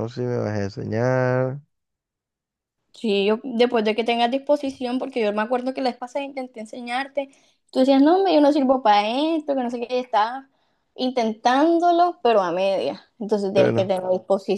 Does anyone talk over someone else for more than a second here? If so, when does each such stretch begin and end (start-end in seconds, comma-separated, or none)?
none